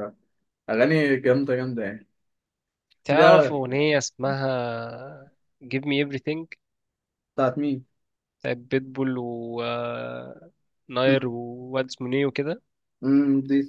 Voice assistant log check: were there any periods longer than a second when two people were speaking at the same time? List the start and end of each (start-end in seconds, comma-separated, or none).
none